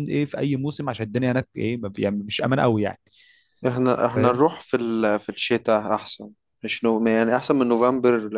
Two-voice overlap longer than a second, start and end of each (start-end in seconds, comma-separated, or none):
none